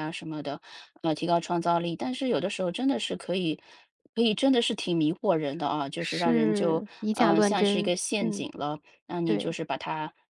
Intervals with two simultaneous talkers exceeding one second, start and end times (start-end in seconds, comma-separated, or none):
6.0-8.5